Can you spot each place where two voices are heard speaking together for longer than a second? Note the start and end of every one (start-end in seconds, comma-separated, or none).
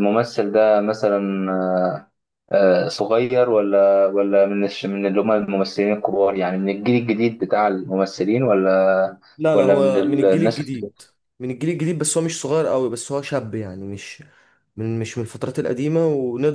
9.4-10.6